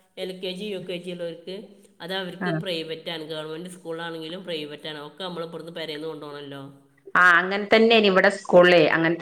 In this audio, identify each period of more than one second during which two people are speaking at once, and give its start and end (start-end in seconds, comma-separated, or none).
none